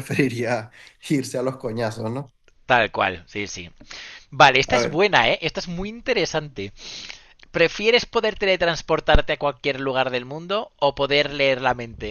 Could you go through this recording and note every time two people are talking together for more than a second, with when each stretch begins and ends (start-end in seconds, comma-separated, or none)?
none